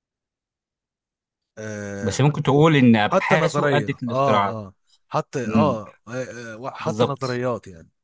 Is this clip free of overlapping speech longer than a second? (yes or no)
no